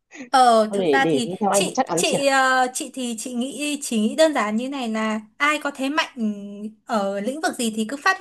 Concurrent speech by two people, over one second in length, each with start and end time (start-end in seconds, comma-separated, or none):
0.7-2.2